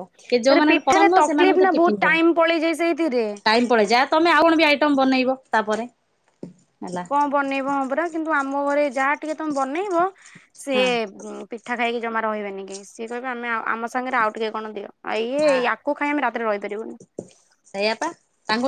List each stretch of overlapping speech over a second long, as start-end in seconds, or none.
0.5-2.2